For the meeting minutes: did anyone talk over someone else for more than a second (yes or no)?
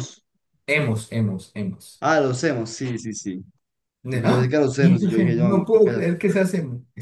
yes